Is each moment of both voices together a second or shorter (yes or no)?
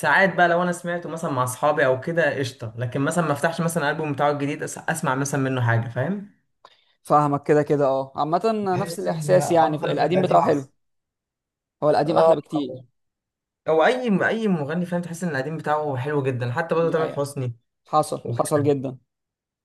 no